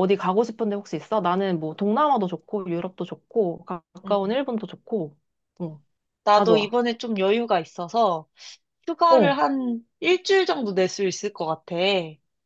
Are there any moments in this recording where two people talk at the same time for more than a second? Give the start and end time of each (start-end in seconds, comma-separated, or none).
none